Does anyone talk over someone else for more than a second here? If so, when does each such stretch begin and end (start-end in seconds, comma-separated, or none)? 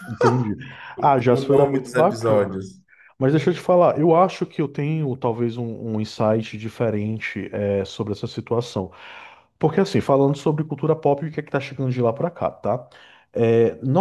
1.3-2.5